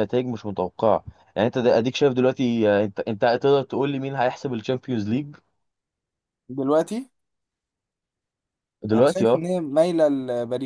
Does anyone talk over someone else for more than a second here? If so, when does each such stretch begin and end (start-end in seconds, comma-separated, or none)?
none